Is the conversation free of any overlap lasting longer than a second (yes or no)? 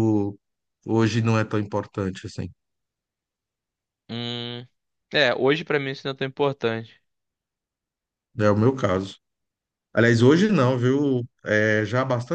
yes